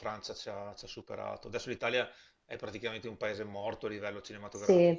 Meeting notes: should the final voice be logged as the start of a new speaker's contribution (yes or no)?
yes